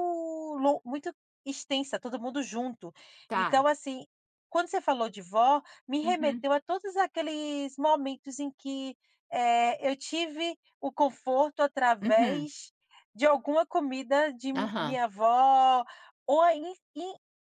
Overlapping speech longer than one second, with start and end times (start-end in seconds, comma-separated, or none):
none